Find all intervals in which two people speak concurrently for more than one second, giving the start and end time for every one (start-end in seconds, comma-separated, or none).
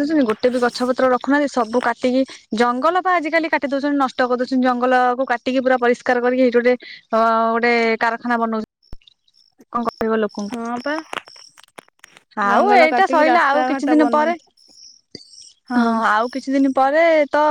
12.5-14.3